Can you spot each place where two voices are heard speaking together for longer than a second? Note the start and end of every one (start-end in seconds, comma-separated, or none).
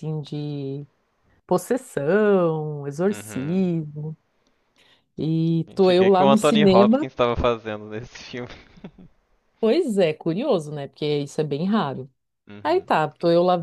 5.7-7.1